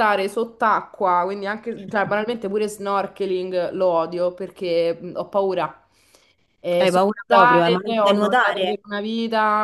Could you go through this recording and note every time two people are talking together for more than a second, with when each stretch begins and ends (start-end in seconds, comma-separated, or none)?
6.8-8.8